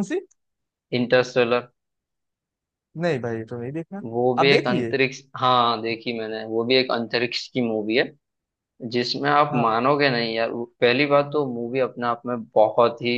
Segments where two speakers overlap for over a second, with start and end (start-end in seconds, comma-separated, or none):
none